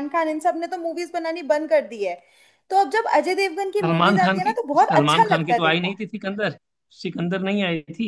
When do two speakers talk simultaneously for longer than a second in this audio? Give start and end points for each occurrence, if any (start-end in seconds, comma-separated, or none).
3.8-6.0